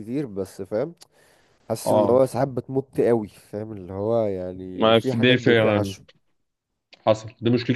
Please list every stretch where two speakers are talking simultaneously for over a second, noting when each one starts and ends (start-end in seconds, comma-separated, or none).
4.8-6.0